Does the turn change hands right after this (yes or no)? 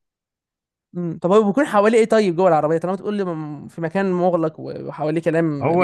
yes